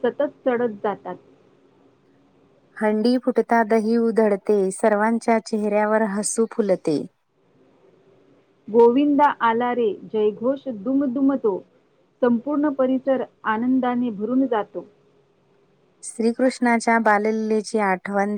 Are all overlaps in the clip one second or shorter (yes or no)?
yes